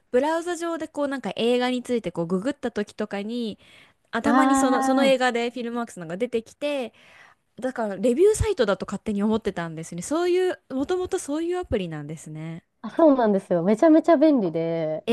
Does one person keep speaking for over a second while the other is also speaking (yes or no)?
no